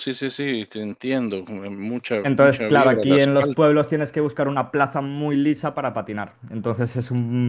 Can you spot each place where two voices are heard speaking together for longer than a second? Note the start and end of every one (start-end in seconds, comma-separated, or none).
2.2-3.7